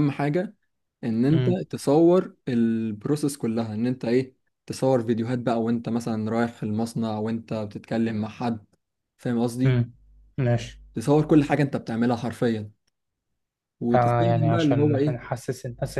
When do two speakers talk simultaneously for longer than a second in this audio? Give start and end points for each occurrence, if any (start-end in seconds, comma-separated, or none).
13.9-15.2